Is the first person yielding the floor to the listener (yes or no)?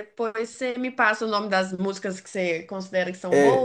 yes